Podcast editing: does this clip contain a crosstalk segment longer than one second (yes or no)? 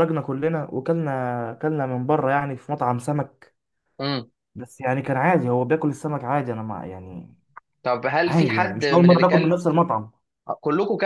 yes